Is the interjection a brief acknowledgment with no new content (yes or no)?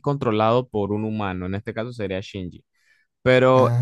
yes